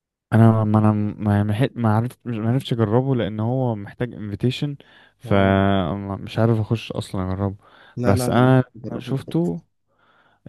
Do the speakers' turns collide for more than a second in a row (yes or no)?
yes